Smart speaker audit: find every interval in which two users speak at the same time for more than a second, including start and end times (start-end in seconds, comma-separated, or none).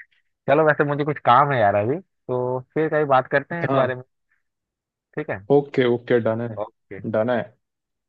none